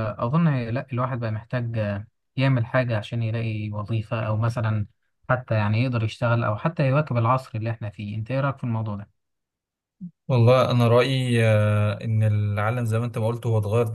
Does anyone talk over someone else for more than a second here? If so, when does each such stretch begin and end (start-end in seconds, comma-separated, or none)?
none